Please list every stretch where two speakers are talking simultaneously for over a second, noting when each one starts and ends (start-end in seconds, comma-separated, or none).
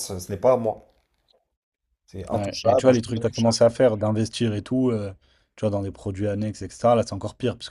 none